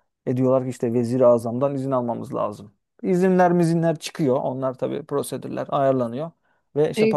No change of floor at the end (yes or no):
no